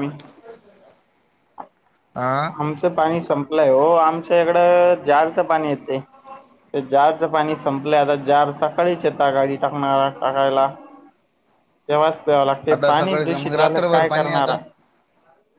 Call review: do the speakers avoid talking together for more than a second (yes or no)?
no